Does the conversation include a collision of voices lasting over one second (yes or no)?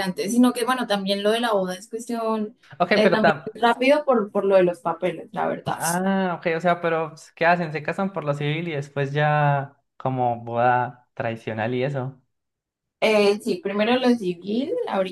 no